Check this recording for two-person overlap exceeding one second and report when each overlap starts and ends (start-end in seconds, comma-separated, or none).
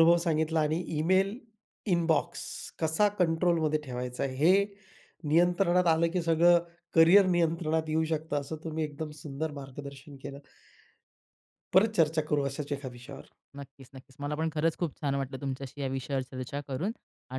none